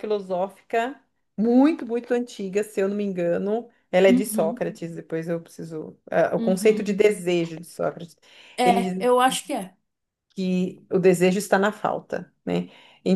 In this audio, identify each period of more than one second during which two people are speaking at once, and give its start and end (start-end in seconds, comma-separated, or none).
none